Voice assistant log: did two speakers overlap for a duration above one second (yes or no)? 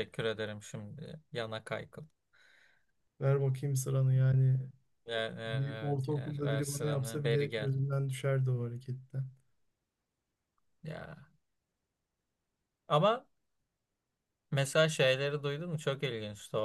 yes